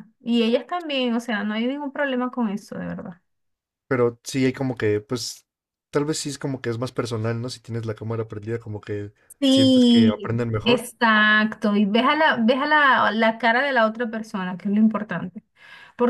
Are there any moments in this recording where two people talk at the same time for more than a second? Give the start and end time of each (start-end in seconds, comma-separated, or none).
9.4-10.9